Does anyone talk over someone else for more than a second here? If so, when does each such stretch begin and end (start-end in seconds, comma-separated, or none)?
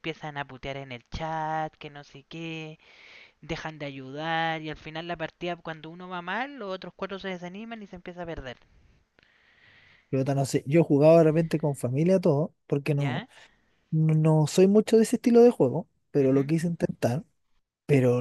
none